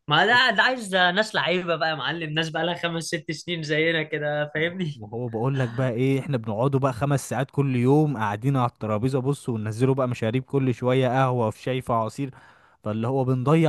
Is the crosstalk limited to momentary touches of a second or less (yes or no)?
yes